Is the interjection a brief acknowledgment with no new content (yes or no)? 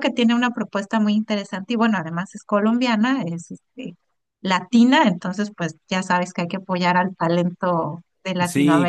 no